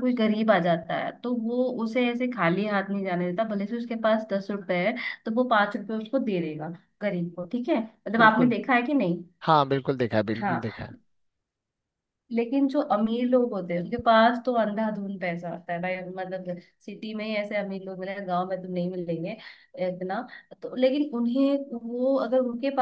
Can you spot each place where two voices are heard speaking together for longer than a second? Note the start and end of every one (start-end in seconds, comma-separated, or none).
none